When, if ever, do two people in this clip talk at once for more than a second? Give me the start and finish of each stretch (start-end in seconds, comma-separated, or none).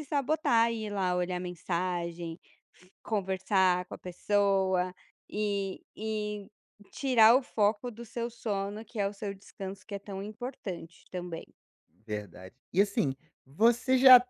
none